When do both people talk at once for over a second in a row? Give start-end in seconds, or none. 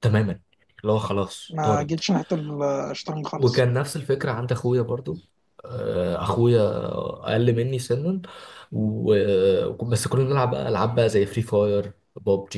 none